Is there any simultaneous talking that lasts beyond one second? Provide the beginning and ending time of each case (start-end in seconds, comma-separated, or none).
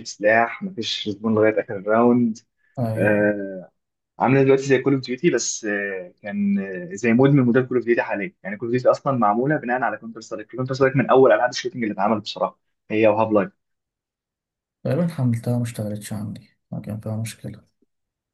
none